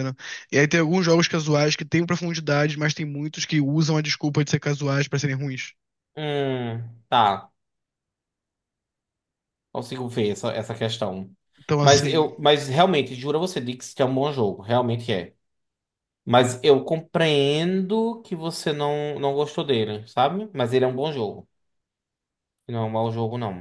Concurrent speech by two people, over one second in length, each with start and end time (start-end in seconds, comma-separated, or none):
none